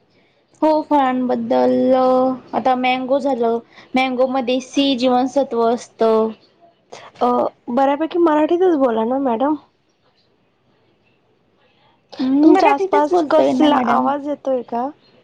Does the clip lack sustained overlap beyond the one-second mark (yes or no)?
no